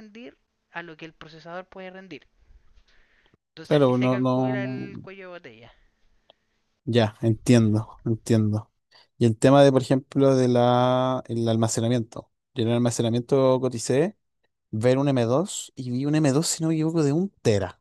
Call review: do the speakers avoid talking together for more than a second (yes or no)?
no